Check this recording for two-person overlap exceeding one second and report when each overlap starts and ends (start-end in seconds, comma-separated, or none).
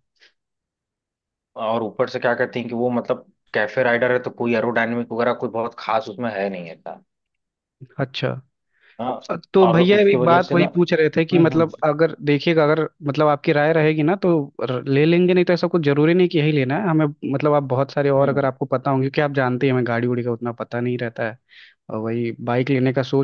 9.7-11.7